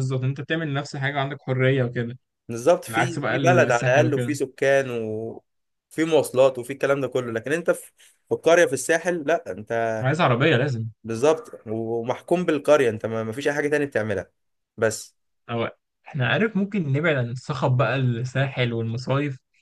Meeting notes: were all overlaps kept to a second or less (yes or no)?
no